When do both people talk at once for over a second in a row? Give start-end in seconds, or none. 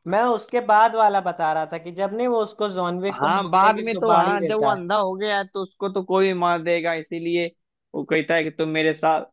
3.1-4.8